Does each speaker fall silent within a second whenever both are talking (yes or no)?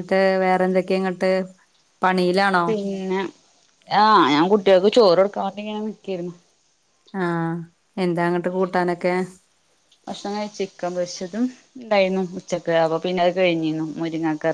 yes